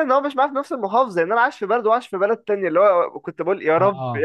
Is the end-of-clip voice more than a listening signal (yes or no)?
no